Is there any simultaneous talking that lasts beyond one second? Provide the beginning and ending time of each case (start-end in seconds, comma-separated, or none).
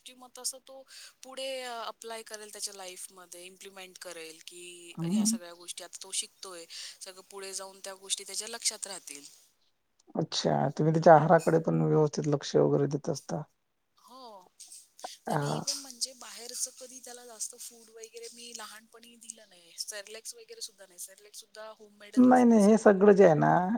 none